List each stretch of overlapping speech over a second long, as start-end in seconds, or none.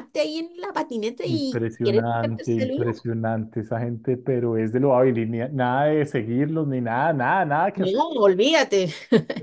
1.2-2.9